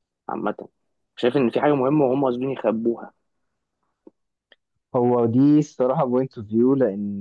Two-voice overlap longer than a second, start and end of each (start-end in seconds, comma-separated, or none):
none